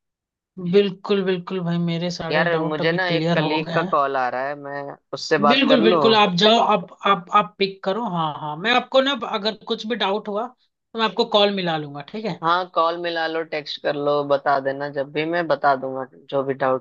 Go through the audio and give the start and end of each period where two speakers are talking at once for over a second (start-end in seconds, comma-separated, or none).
2.3-4.0